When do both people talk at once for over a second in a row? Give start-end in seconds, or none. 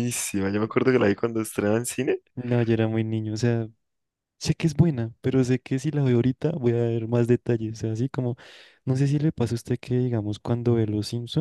none